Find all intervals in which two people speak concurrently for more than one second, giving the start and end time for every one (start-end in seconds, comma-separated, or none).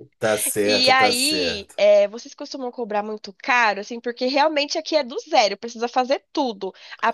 0.6-1.8